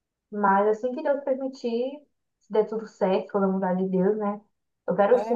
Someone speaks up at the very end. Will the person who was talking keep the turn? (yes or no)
no